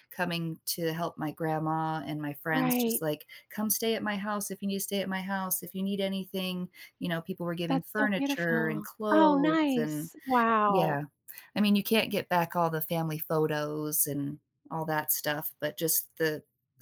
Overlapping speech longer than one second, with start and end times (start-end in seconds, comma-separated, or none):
7.7-10.1